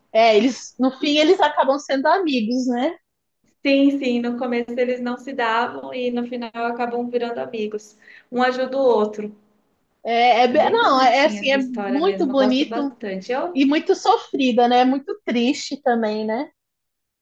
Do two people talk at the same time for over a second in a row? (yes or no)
yes